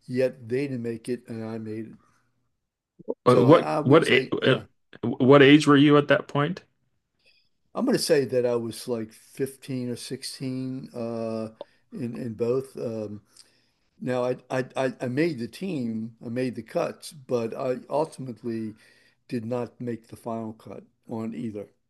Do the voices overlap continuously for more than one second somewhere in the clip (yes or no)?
yes